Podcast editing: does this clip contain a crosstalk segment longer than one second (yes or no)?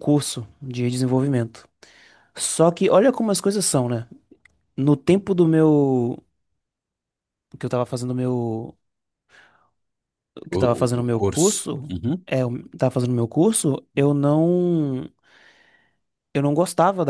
yes